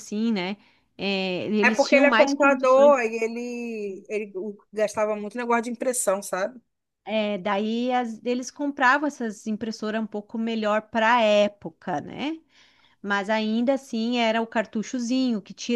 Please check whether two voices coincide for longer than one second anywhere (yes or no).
yes